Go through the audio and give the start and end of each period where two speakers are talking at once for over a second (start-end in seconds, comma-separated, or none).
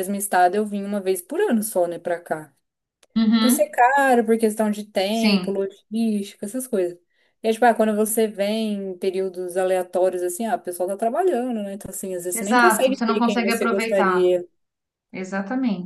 12.3-14.3